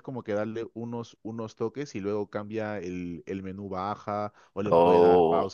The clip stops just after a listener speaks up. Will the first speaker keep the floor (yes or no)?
yes